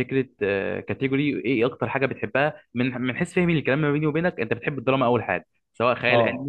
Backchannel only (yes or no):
no